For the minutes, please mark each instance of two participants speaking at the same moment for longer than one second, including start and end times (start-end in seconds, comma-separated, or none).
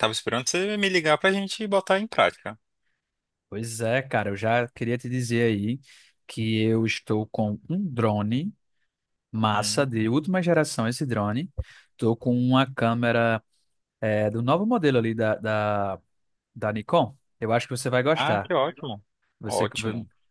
none